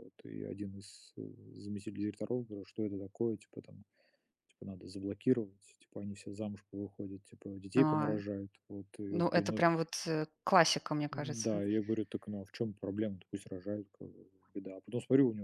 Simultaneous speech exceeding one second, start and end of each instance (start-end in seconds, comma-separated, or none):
none